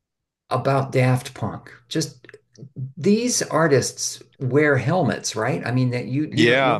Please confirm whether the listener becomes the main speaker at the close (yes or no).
yes